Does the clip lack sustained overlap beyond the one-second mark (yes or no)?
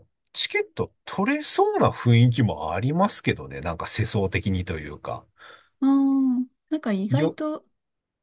yes